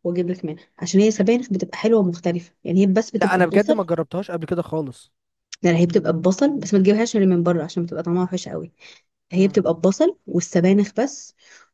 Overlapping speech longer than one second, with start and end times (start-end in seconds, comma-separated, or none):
none